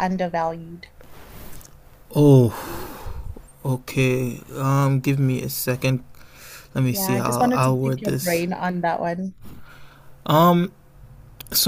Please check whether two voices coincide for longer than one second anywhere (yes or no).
yes